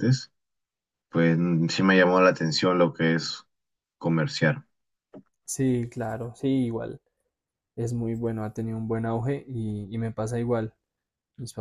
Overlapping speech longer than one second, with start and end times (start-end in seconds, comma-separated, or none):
none